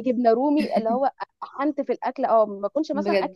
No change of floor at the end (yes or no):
yes